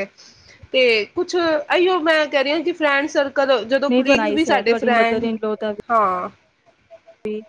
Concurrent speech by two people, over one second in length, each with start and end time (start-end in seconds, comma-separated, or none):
3.9-5.3